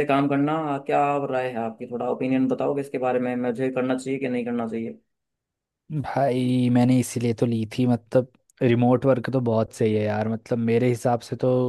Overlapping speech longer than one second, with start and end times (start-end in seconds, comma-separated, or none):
none